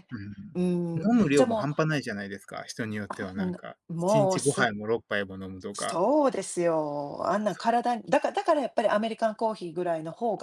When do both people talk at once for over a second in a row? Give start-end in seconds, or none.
0.5-1.8, 3.1-4.7